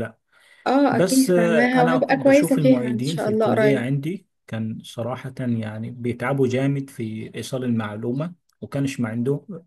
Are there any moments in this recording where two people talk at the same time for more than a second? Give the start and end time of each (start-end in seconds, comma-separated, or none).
0.9-3.9